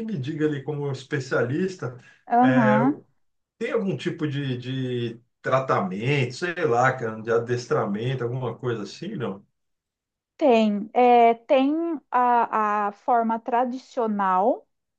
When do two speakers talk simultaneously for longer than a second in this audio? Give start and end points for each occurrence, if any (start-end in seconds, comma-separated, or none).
none